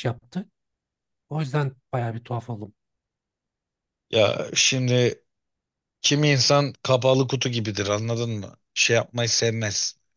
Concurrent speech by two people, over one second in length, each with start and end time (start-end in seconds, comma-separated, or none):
none